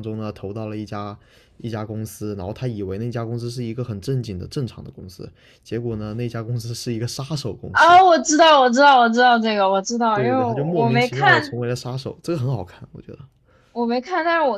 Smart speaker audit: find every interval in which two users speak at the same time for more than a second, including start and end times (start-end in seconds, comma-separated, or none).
10.1-11.5